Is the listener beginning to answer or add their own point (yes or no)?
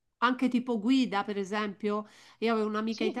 no